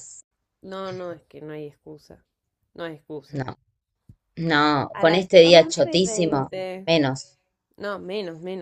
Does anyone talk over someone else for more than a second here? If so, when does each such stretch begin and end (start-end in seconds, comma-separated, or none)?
4.9-6.9